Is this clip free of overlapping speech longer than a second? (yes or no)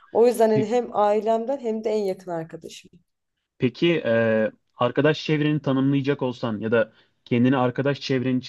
yes